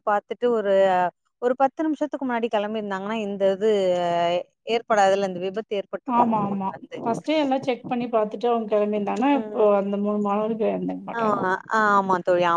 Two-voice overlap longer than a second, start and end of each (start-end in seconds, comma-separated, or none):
none